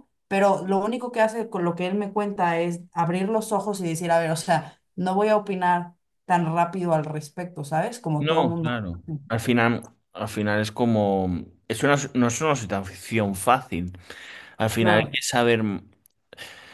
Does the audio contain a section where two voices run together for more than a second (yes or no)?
no